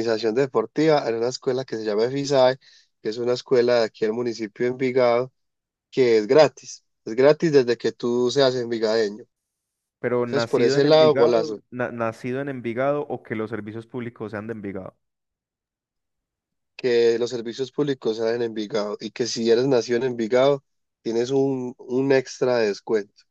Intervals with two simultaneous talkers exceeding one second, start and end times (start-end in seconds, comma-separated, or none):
10.2-11.6